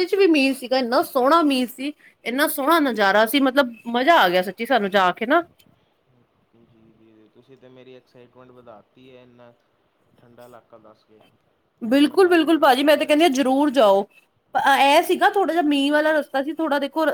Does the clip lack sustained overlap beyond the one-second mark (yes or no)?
no